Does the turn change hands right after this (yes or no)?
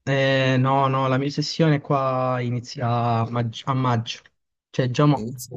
no